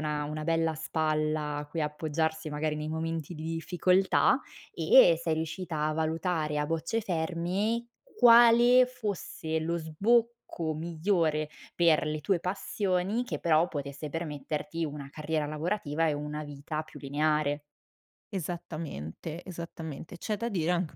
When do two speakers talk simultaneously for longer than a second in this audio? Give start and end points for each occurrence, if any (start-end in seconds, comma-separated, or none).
none